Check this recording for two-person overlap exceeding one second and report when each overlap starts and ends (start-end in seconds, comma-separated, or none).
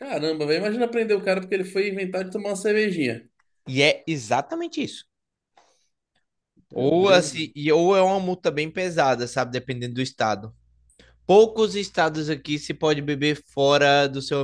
none